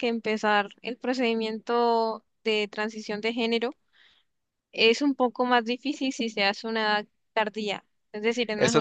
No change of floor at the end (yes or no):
no